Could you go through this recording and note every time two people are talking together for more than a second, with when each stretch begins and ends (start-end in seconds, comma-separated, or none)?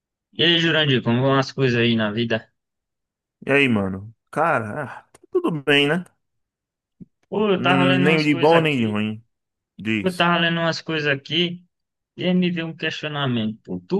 7.6-9.0